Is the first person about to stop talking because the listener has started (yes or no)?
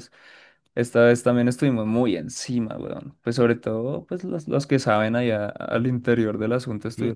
yes